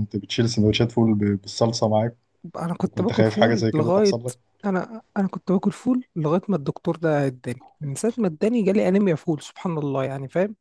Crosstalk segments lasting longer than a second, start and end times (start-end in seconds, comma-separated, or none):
2.8-4.2